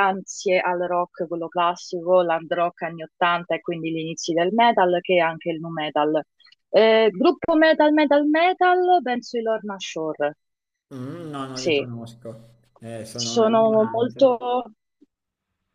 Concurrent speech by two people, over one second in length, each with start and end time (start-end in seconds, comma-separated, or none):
13.1-14.3